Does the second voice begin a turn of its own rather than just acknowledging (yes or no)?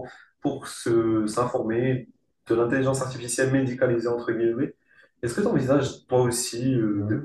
no